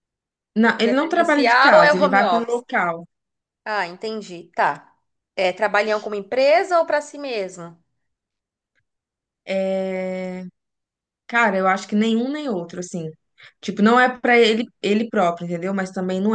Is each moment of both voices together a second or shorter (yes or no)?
no